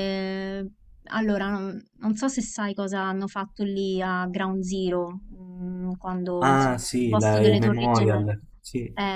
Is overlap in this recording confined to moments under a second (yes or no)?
no